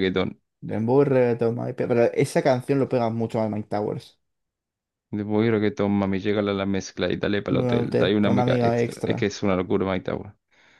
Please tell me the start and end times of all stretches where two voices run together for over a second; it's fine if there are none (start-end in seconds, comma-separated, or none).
7.5-9.3